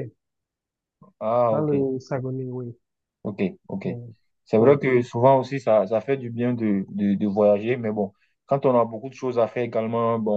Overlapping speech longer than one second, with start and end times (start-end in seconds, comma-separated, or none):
none